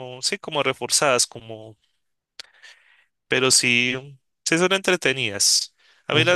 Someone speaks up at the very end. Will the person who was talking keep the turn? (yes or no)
yes